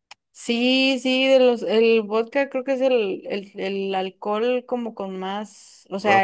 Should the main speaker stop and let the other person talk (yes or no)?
no